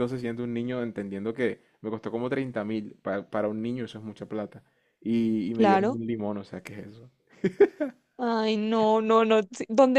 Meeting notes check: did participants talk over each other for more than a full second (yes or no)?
no